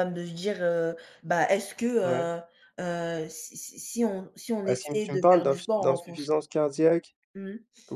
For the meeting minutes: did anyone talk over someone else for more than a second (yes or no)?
yes